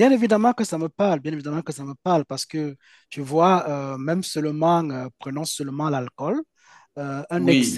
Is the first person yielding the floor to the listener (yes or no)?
no